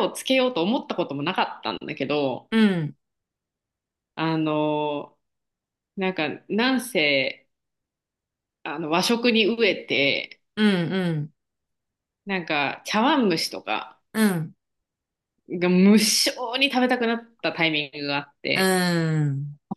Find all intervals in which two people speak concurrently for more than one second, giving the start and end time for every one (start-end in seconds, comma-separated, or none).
none